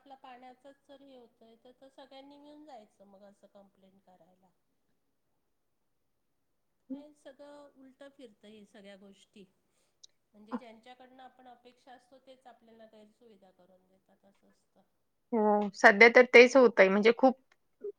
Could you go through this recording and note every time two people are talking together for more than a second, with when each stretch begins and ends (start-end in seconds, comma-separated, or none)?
none